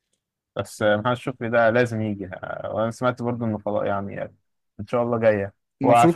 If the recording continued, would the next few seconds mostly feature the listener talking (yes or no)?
yes